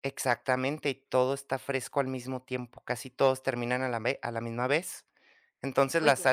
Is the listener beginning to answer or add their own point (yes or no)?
no